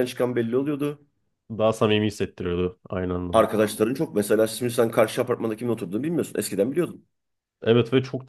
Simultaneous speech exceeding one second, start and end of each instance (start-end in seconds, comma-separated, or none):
none